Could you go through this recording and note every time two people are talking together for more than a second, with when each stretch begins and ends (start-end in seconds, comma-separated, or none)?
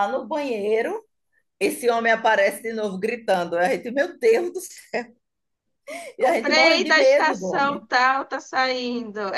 6.2-7.9